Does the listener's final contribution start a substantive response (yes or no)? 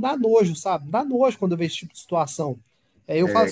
no